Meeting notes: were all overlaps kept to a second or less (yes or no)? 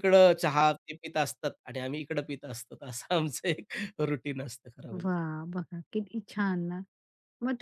yes